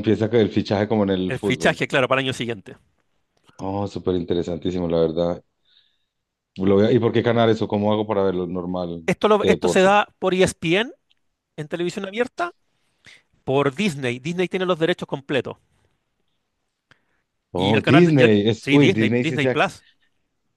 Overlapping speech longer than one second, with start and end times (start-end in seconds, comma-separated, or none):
17.6-19.6